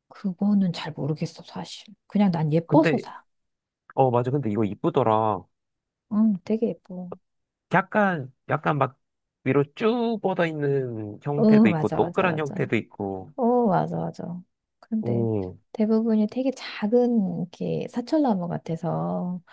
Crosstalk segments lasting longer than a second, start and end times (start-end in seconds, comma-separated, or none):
11.4-12.7